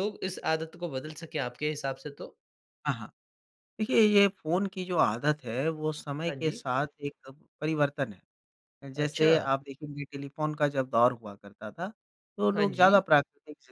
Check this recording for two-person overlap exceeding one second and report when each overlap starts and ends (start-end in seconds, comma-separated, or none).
none